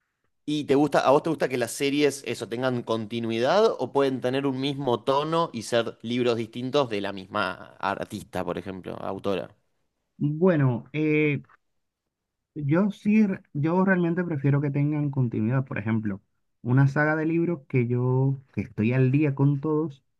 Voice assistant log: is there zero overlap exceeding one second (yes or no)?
yes